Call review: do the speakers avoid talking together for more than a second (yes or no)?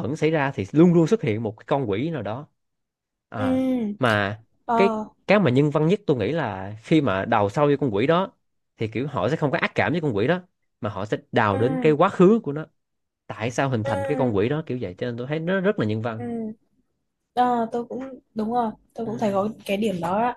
yes